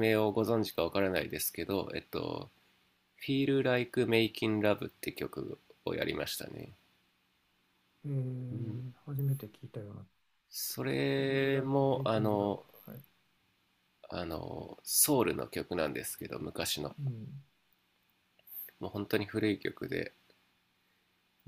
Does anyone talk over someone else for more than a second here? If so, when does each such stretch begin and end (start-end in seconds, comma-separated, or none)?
11.1-12.6